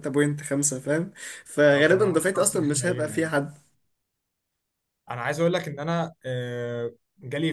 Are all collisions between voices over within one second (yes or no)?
no